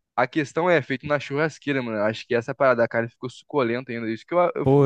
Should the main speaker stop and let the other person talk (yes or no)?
yes